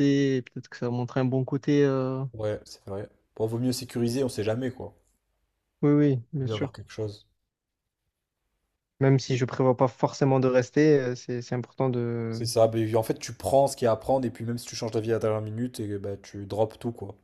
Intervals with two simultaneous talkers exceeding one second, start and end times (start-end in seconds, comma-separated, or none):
none